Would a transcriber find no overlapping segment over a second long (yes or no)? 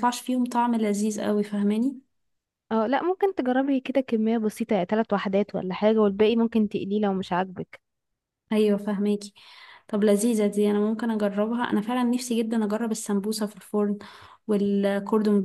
yes